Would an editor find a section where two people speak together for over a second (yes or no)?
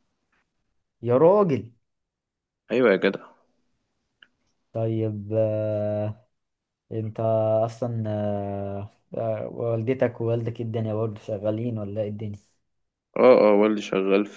no